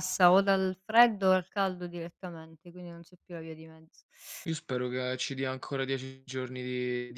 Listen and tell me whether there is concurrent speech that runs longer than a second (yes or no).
no